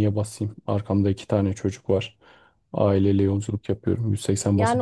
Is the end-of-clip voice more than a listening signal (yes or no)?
yes